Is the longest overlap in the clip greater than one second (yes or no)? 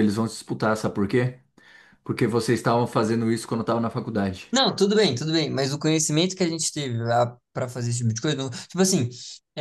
no